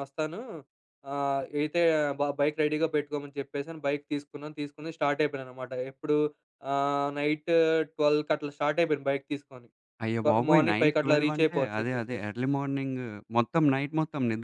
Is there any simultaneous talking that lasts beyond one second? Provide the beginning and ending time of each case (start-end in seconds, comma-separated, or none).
10.2-12.3